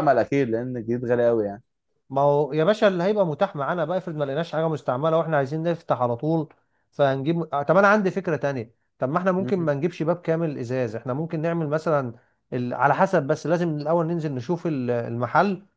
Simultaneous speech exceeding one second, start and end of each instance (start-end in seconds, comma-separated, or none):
none